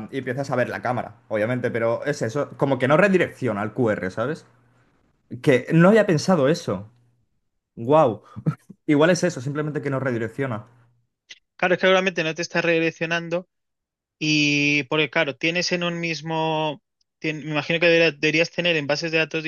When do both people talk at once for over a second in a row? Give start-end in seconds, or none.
none